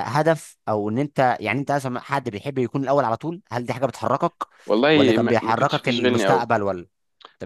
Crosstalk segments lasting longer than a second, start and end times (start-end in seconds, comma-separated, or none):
4.9-6.5